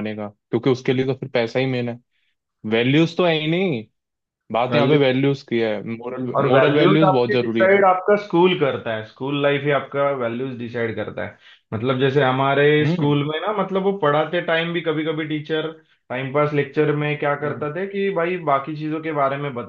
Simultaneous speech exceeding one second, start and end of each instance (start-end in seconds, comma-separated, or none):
6.4-7.8